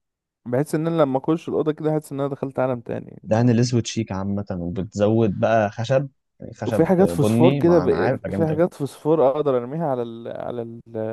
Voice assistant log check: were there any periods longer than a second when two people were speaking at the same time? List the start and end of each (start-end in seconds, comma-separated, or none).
6.7-8.6